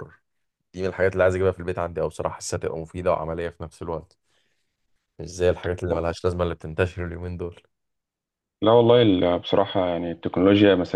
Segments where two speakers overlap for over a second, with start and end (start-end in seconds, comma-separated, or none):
none